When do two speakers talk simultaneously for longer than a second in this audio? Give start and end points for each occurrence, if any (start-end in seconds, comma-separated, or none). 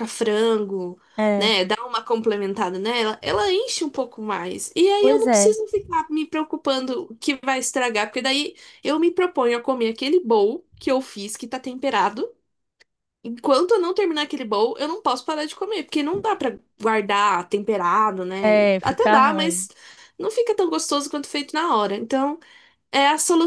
18.4-19.7